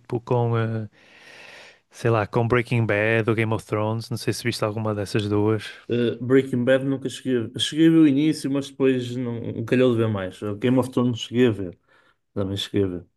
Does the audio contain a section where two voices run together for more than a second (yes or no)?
no